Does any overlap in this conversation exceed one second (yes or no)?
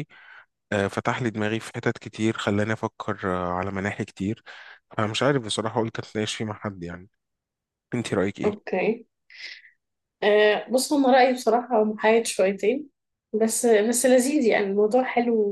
no